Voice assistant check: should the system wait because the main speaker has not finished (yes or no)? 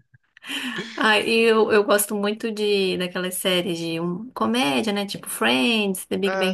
yes